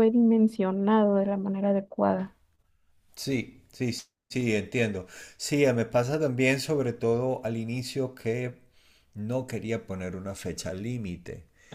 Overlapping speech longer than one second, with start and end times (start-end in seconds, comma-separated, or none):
none